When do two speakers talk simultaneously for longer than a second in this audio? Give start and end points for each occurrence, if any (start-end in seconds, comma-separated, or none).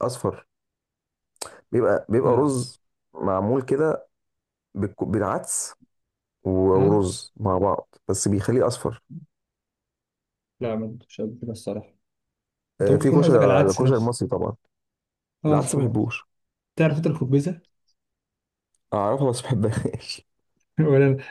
12.8-14.1